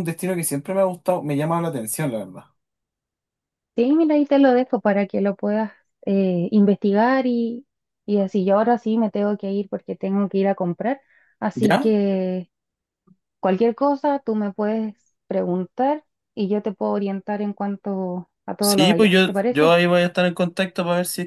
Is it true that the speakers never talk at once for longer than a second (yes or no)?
yes